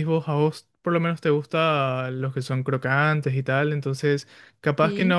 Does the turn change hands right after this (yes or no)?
no